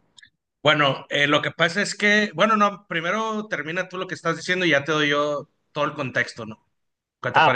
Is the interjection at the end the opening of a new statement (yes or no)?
yes